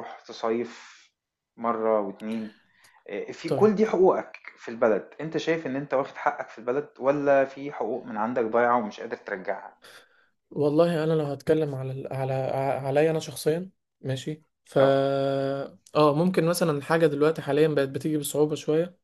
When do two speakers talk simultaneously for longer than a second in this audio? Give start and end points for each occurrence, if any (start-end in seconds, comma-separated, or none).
none